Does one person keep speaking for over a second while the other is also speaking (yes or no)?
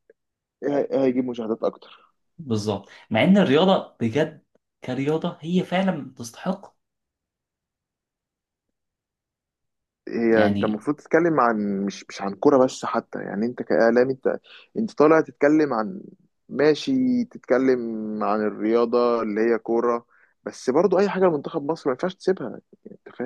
no